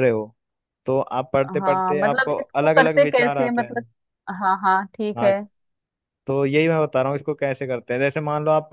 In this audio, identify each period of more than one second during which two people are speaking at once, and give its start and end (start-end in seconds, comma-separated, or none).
1.6-3.8